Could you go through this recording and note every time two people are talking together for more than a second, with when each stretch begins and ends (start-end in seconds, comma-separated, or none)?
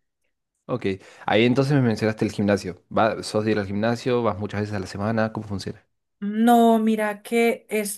none